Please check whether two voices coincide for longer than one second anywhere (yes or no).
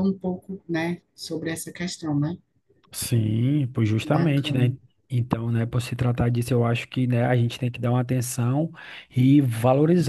no